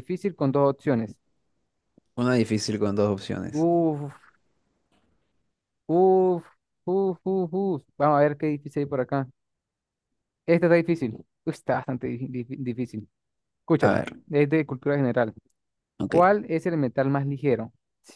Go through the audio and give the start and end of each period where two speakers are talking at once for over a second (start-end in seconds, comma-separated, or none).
none